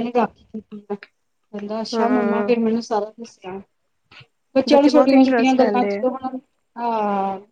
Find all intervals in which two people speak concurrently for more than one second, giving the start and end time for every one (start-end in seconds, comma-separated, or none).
4.7-6.1